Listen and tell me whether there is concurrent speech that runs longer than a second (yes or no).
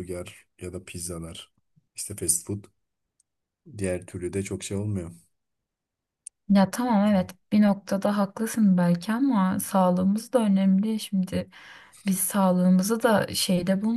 no